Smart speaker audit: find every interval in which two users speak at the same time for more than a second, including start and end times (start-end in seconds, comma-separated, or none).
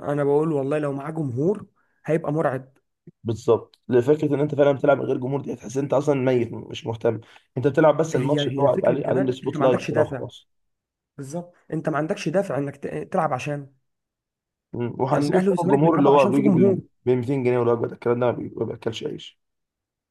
8.1-10.2, 15.1-16.8